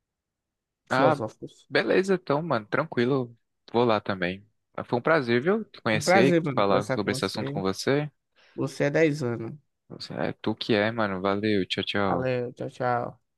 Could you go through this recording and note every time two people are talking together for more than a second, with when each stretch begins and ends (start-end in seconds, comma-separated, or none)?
5.9-7.6